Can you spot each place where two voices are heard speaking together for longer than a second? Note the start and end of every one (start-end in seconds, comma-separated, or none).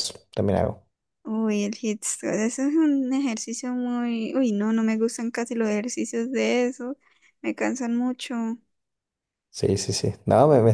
none